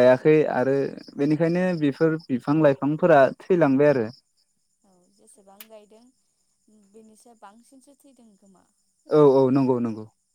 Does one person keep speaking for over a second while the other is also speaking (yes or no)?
no